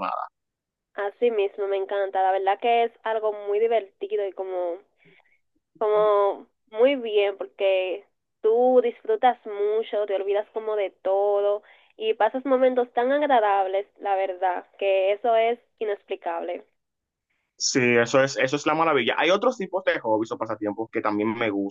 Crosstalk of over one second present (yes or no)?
no